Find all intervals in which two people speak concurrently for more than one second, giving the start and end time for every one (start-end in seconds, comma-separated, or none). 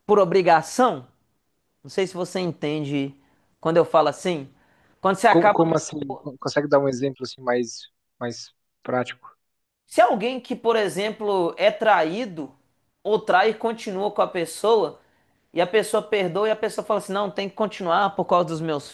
none